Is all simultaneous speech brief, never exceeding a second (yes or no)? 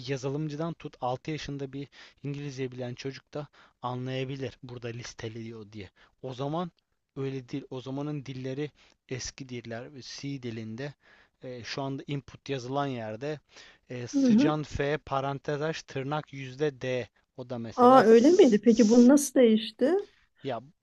no